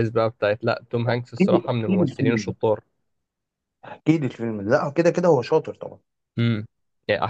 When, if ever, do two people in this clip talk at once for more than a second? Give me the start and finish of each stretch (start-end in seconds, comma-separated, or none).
1.2-2.5